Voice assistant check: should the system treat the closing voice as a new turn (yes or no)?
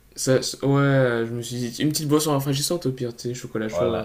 yes